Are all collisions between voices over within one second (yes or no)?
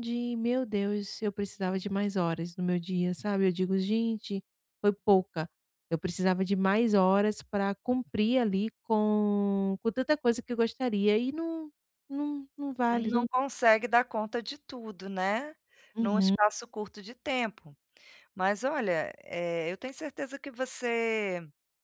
yes